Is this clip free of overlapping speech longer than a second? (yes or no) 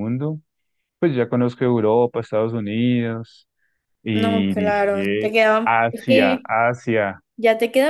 no